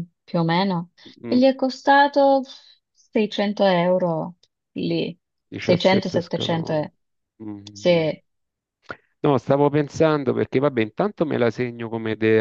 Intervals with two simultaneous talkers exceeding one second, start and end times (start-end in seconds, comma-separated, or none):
5.6-6.9